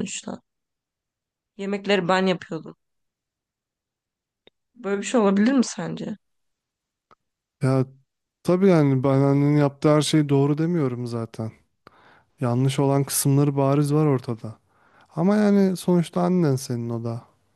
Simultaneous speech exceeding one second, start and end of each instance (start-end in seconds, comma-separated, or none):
none